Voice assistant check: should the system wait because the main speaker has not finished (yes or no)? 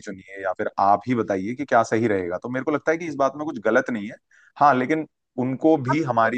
yes